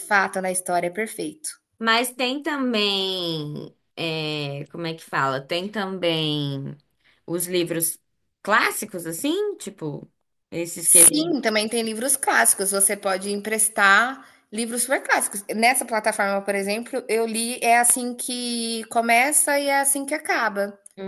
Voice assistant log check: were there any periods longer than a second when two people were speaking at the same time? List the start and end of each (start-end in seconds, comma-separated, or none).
none